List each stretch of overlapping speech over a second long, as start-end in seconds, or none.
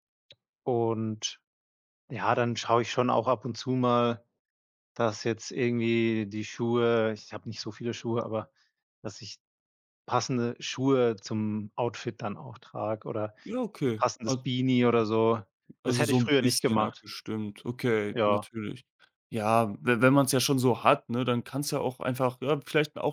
15.8-17.1